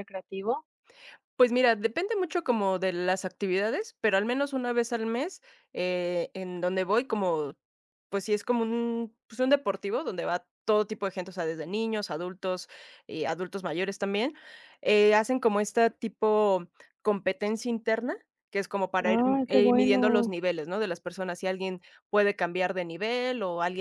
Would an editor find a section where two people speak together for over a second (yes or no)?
yes